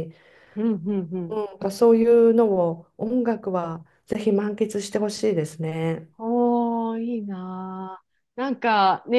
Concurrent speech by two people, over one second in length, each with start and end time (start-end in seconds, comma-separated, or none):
none